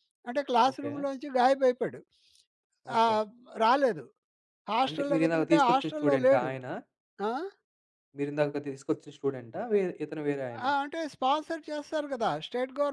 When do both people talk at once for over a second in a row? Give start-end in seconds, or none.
4.9-6.5